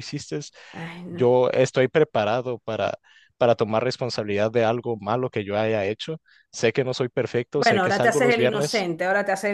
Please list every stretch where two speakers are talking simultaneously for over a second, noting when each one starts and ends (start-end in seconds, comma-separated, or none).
7.5-8.9